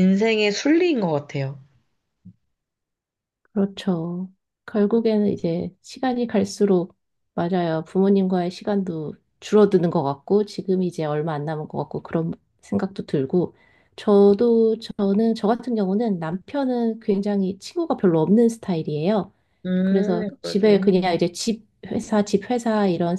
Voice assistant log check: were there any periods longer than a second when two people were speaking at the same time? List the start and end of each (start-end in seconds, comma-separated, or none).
19.8-21.1